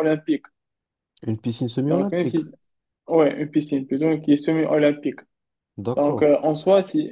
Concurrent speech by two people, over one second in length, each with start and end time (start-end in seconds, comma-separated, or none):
none